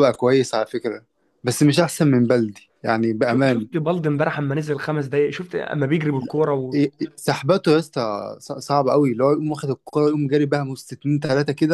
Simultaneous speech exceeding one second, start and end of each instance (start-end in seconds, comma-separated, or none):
none